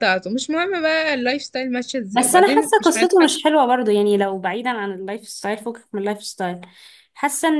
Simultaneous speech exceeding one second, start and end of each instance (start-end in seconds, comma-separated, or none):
2.1-3.3